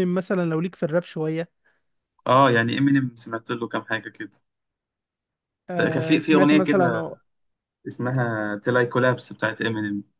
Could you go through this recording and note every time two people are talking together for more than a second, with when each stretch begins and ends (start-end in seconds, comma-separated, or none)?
5.8-7.1